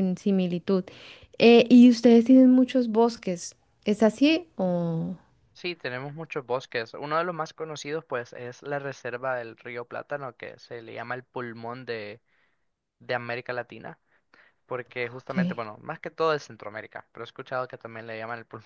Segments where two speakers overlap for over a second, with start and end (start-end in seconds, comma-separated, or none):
none